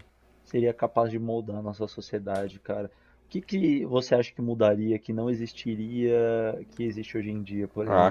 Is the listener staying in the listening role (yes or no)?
no